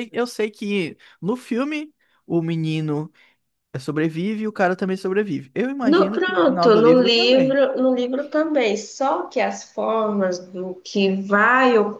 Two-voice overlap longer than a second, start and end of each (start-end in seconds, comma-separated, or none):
5.9-7.6